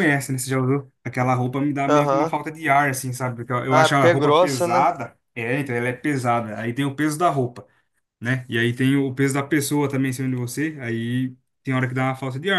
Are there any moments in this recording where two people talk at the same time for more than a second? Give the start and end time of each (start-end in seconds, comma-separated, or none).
3.7-4.9